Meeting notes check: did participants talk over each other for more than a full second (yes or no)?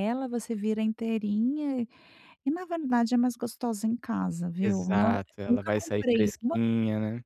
yes